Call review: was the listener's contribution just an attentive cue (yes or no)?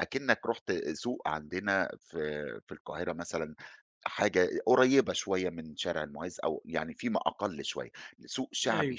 yes